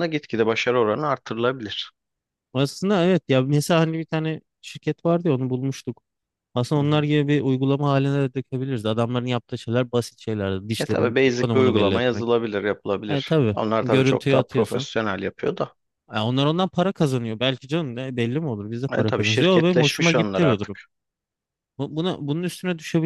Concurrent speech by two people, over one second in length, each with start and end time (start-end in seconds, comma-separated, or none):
10.8-12.3, 13.1-14.9, 18.9-20.8